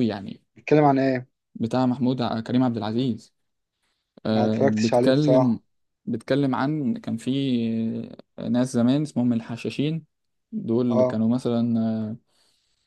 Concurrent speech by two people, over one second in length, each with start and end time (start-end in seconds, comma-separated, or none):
4.3-5.6